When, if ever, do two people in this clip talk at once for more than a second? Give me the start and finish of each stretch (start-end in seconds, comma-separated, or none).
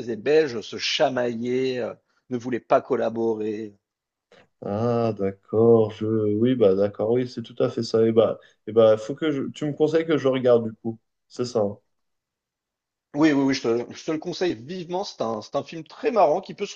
none